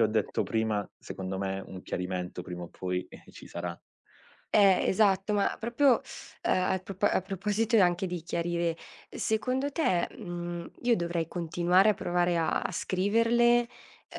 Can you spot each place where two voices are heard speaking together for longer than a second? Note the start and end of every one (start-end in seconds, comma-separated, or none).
none